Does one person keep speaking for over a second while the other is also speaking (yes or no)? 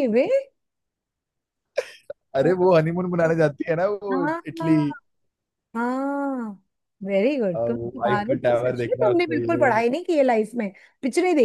yes